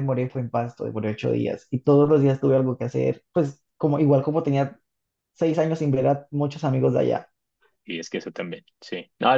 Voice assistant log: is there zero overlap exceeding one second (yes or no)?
yes